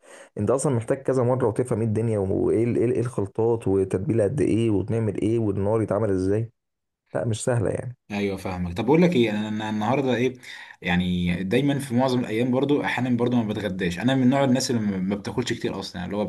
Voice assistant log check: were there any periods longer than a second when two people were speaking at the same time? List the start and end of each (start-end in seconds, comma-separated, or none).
none